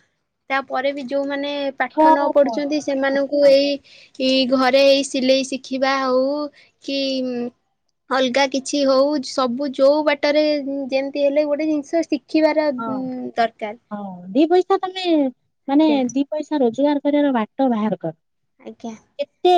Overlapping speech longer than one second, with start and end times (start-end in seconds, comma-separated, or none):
1.9-3.5